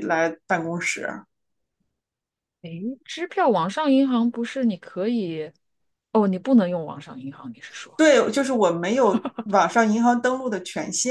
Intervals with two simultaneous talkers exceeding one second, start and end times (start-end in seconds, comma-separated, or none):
none